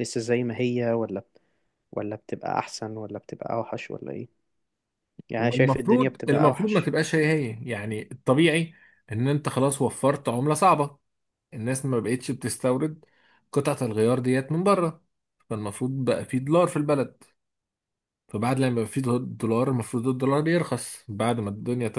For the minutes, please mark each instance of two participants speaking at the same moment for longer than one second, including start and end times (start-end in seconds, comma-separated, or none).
5.4-6.9